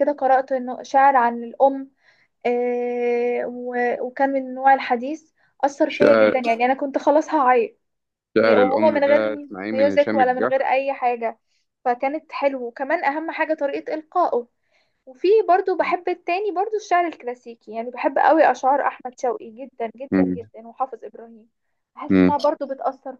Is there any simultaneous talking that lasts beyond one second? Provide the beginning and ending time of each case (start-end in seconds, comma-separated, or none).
8.4-10.5